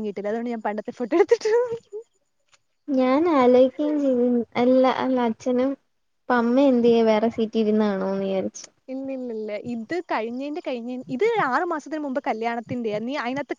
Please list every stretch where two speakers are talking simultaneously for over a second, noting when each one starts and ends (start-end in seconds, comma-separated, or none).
none